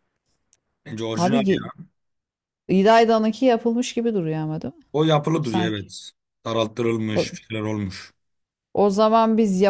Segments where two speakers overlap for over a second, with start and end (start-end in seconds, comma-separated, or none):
none